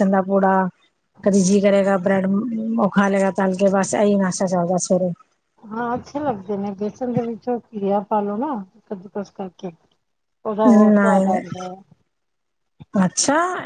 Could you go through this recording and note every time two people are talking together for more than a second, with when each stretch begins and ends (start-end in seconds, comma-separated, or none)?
none